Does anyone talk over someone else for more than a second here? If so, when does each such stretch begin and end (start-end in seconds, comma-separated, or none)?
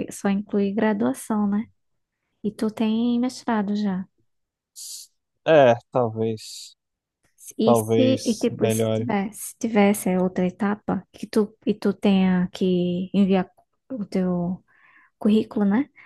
7.6-9.1